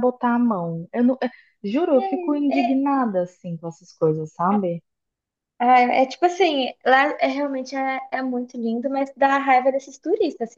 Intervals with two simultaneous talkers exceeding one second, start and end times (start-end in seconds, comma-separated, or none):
none